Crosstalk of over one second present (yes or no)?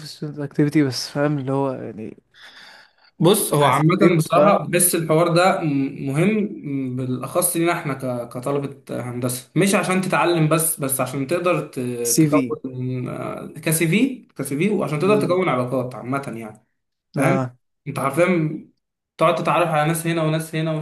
yes